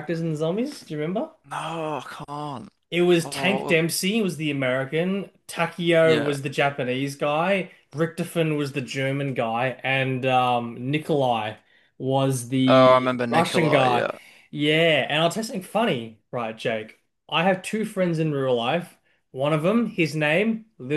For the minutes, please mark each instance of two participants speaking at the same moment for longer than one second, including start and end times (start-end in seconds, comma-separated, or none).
12.7-14.1